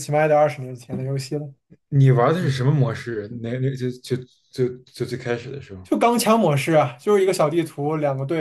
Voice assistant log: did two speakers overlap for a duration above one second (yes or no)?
no